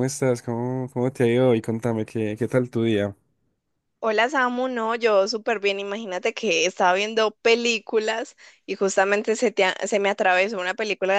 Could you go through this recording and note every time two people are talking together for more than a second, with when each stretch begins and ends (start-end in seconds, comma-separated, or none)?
none